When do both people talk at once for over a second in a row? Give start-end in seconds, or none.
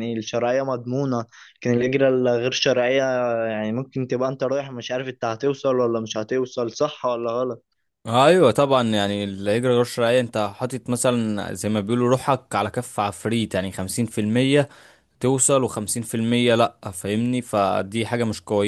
none